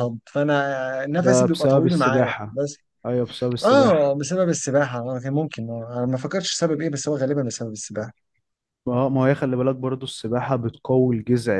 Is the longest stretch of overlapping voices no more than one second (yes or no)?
no